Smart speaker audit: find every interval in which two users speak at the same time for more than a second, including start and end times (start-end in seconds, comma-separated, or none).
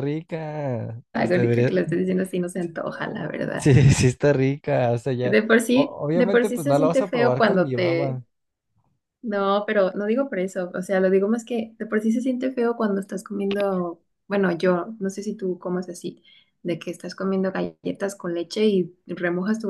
5.2-8.2